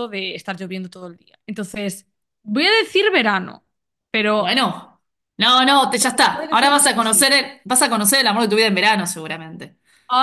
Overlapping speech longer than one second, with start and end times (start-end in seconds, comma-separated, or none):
6.2-7.5